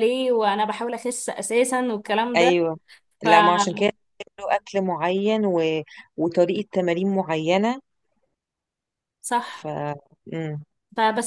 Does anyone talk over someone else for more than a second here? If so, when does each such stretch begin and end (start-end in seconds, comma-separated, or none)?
none